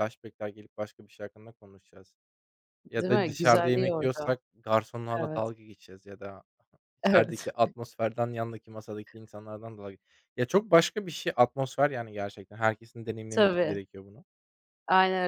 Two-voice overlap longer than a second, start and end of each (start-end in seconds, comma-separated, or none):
3.0-4.4